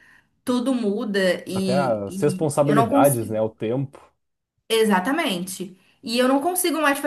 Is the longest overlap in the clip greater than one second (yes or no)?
yes